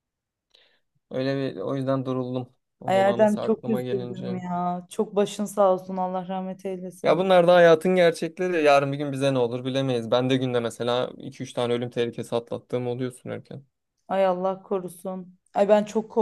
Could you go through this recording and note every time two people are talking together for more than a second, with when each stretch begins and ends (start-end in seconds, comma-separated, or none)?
2.9-4.4